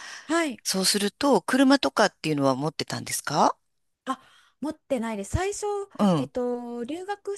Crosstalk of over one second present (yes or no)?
no